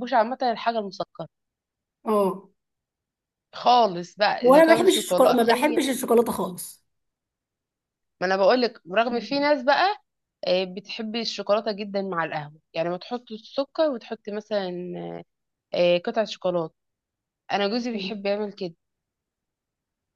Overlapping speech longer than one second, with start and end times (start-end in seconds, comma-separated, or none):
4.4-5.8